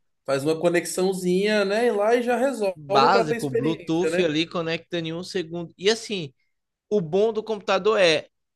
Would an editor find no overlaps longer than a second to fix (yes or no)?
no